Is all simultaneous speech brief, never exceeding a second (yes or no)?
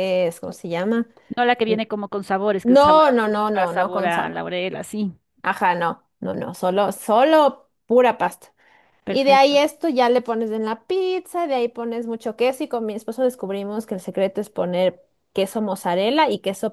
no